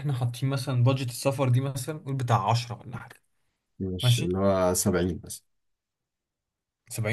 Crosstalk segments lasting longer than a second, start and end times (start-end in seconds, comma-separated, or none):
none